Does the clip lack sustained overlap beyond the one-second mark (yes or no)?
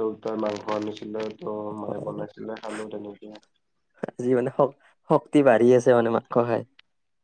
yes